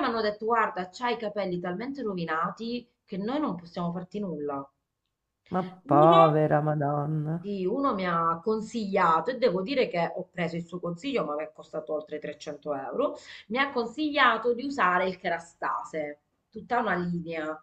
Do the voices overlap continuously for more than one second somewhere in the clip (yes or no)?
no